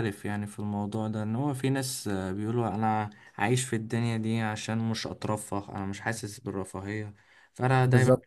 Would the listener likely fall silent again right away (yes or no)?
yes